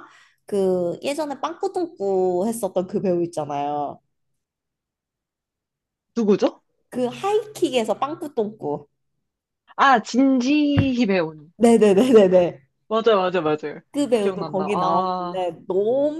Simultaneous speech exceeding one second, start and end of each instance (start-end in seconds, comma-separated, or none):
14.2-15.5